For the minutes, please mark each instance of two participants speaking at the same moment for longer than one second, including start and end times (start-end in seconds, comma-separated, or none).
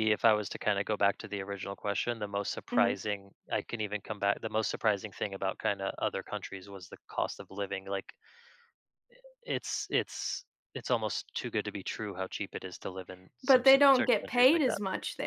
13.4-14.8